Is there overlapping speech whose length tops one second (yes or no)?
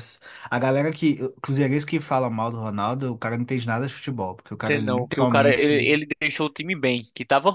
yes